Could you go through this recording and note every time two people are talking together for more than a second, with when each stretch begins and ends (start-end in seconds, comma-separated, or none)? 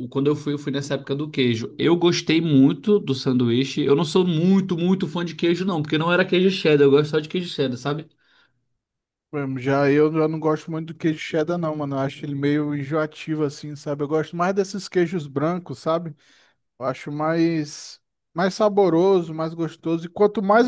none